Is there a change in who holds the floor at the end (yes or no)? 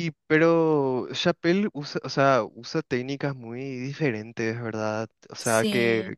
no